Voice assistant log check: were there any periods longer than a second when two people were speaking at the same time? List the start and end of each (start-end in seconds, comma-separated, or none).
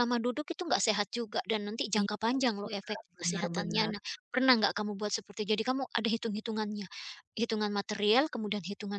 2.0-3.9